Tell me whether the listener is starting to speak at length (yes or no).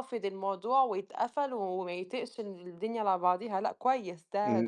yes